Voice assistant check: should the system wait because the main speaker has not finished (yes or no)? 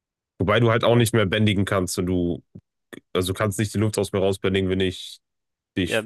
no